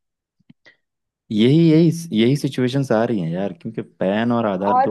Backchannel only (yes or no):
no